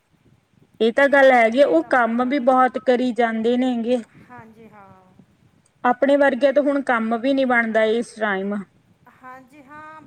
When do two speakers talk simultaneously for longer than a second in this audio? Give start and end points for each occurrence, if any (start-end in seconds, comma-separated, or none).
1.0-2.4